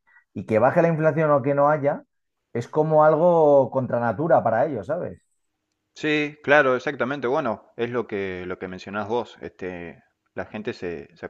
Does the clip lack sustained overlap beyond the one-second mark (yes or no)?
yes